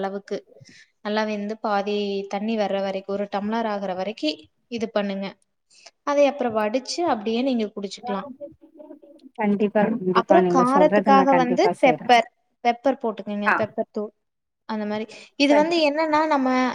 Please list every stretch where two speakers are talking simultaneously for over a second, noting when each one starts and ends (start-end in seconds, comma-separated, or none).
10.2-12.1